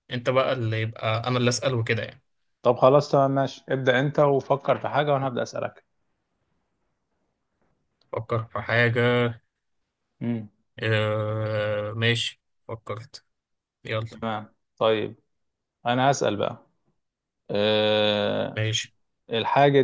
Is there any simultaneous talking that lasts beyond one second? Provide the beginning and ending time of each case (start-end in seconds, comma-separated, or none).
none